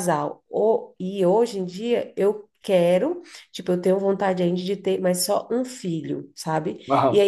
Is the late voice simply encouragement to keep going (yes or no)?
yes